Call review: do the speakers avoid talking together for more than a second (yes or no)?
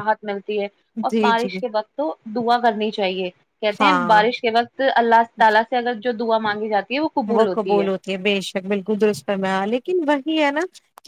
yes